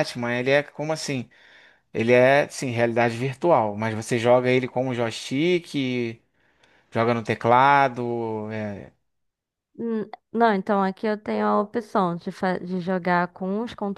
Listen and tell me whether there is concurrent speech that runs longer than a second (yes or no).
no